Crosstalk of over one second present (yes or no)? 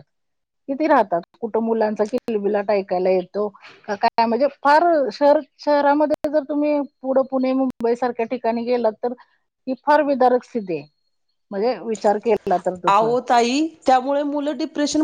no